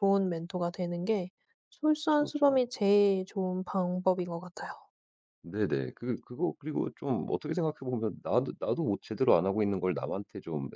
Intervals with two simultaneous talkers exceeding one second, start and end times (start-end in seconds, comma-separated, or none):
none